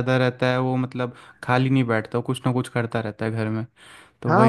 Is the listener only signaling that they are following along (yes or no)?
no